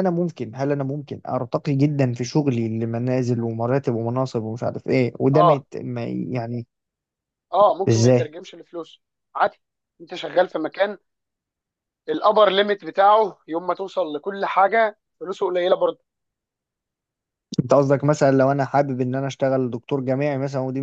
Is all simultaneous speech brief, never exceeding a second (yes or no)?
yes